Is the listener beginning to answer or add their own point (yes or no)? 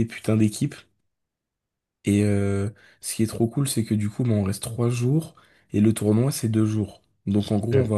no